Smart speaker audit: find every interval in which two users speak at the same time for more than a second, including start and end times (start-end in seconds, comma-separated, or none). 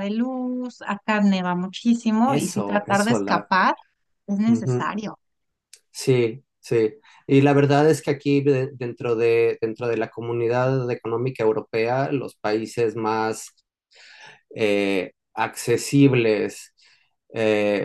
2.2-3.5